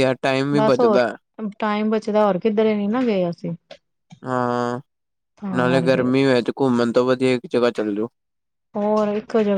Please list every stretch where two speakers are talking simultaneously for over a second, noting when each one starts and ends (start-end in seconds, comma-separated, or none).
none